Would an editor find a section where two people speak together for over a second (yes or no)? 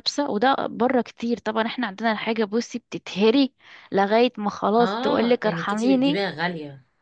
yes